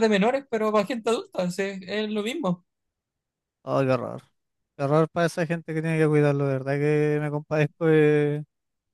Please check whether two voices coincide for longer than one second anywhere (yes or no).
no